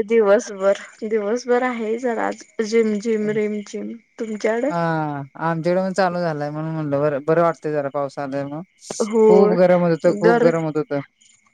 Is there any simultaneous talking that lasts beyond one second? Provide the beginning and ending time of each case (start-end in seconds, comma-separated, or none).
none